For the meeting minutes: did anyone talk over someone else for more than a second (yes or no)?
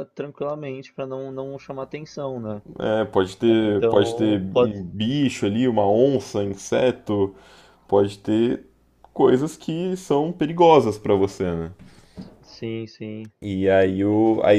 yes